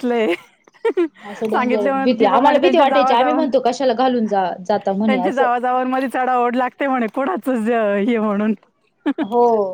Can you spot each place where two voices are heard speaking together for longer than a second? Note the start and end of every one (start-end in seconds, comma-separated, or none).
1.5-3.5